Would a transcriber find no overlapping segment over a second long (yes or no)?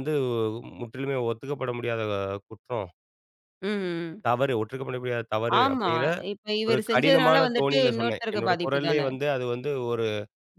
no